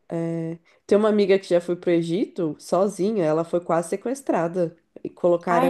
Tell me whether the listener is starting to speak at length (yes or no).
no